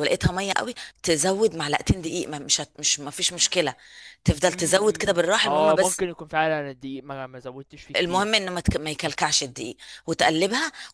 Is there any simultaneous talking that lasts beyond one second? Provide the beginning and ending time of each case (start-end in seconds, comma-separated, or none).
4.5-6.0